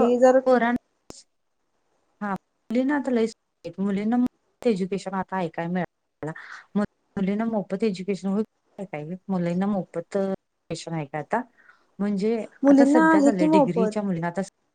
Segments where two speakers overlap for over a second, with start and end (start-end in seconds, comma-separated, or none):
12.7-13.9